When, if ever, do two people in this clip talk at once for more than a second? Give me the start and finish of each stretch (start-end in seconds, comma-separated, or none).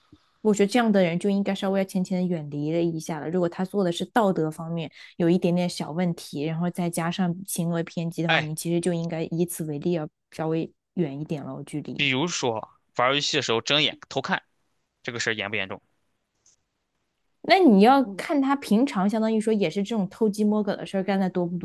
none